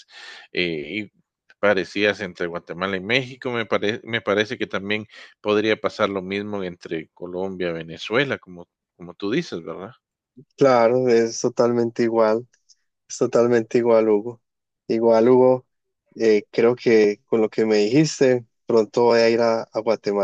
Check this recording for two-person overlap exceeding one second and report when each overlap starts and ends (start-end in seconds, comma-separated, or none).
none